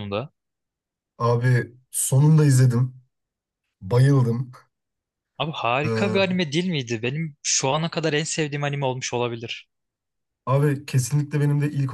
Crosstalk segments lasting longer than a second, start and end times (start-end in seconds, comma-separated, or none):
none